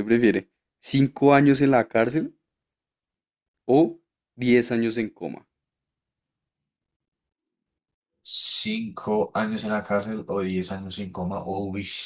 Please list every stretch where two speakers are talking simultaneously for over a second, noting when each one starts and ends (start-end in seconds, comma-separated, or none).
none